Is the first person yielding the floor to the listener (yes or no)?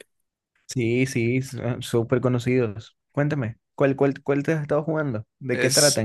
yes